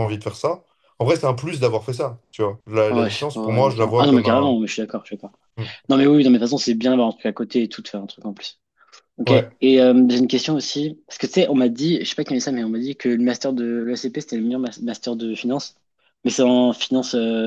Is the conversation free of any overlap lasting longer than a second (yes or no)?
no